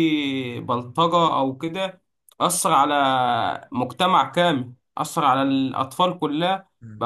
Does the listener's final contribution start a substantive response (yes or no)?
yes